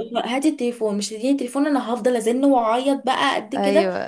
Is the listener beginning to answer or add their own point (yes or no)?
yes